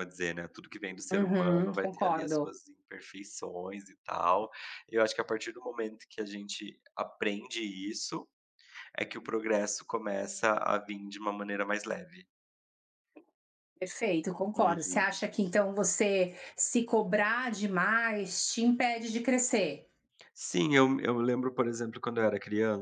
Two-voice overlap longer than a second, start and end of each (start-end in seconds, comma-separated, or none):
1.1-2.5